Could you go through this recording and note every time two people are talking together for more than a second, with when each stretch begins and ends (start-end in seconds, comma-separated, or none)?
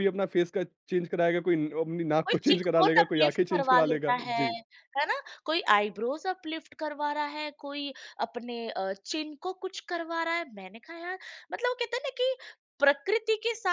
2.3-4.4